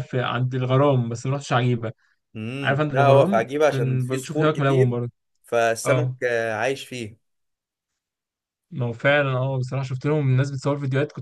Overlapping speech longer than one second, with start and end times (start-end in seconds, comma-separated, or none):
2.6-5.0